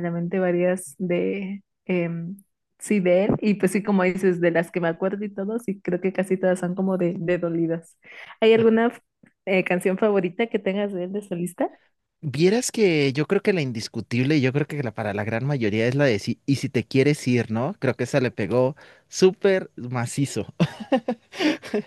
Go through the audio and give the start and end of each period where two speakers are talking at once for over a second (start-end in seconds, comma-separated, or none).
none